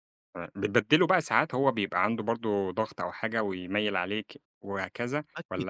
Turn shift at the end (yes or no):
yes